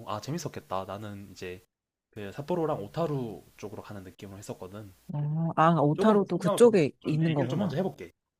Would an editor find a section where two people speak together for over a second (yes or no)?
yes